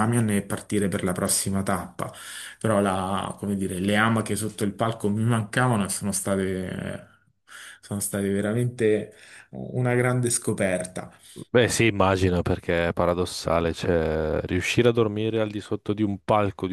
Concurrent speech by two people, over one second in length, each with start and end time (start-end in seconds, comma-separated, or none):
none